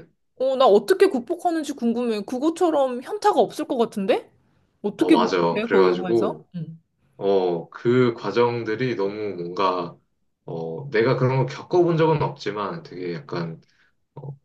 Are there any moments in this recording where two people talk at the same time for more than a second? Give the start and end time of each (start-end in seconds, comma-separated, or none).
5.0-6.5